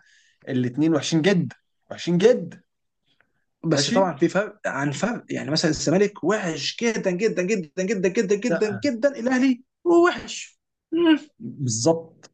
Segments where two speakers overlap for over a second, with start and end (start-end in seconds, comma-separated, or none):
none